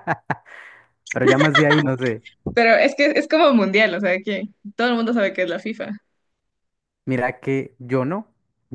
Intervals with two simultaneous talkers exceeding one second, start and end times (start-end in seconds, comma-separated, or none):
none